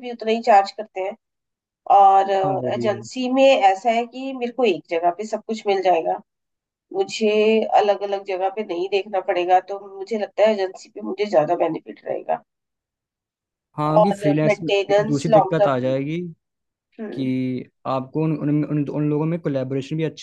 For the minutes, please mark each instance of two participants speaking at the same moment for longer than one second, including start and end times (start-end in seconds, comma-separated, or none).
14.0-15.9